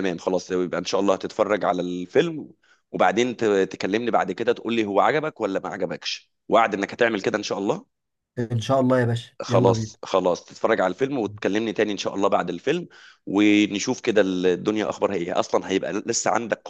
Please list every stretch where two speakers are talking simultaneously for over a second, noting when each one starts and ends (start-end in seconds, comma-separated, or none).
none